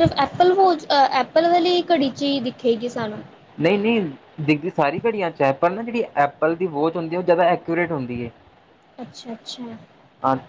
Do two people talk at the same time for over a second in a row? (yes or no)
no